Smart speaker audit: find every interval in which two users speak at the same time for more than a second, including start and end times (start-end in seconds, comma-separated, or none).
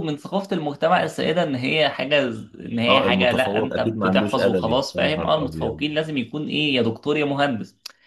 2.9-5.8